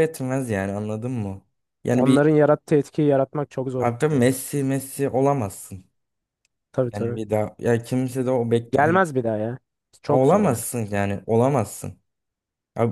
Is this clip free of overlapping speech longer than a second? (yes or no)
yes